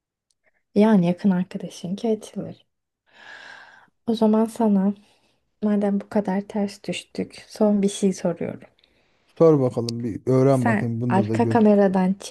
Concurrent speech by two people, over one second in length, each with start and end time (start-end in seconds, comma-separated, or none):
10.5-11.7